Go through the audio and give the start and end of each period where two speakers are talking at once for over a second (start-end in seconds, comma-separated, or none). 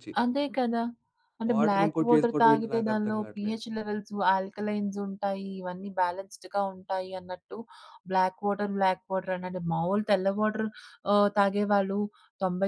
1.5-3.6